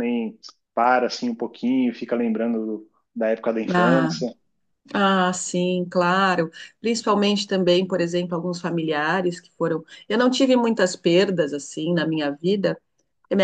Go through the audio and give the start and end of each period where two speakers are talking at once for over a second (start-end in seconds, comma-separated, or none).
none